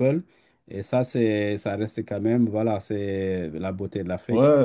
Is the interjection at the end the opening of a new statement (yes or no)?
yes